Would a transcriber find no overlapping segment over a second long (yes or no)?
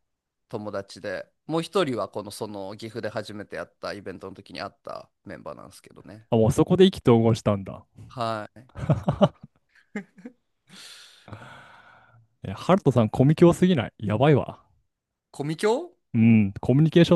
yes